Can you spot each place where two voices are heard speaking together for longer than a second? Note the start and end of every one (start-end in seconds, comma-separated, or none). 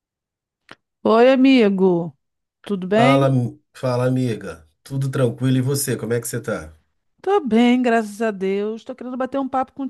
none